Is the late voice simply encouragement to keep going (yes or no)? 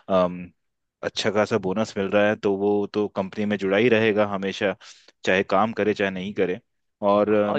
no